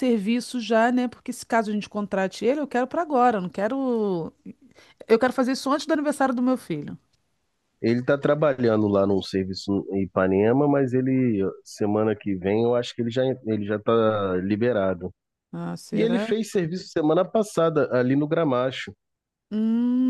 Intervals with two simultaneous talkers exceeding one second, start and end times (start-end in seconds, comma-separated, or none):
none